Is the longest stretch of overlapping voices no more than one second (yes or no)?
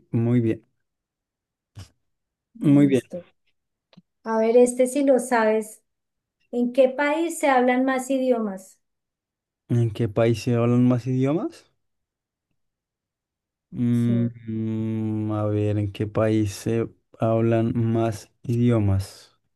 yes